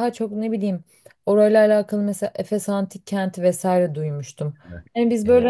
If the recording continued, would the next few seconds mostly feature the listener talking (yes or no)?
no